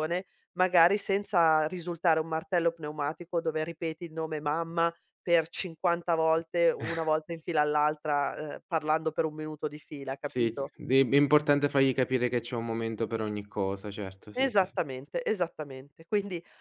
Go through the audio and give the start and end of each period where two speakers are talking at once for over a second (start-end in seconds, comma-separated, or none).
none